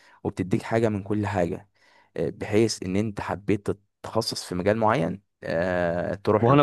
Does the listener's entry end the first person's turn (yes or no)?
yes